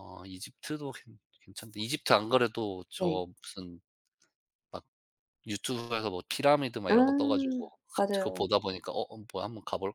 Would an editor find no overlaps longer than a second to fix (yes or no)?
no